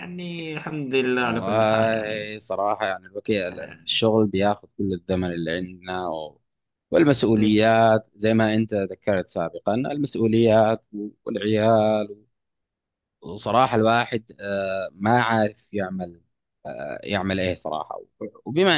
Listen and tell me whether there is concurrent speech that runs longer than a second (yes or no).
no